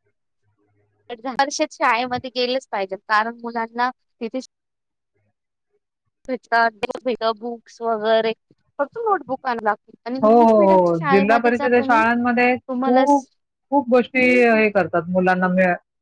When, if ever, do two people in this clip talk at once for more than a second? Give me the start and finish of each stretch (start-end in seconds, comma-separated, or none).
none